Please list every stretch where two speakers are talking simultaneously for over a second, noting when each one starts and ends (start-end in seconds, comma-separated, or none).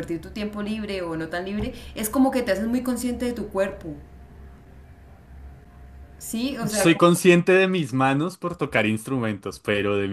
none